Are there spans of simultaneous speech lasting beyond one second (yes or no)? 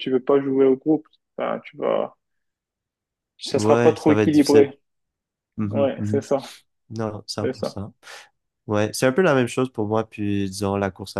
yes